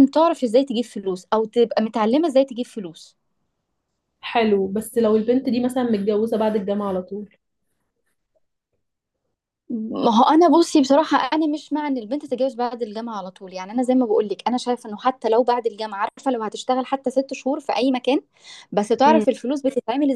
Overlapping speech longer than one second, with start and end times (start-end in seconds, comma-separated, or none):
none